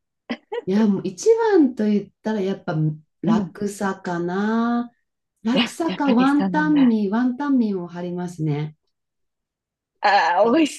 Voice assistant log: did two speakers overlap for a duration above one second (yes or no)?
yes